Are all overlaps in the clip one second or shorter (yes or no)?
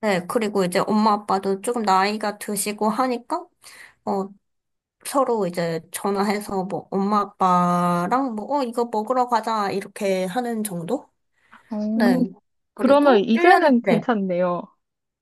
no